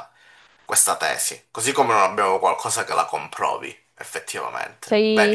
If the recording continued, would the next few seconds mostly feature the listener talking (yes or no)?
yes